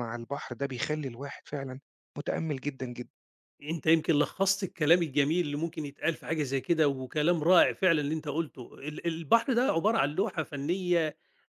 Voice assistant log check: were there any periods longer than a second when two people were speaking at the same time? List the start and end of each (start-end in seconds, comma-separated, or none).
none